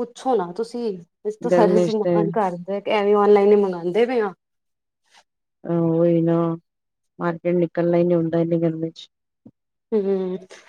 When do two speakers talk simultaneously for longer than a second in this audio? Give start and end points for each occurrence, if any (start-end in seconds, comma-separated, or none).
none